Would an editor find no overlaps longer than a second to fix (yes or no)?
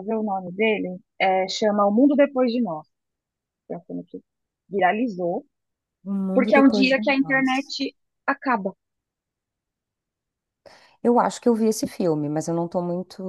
no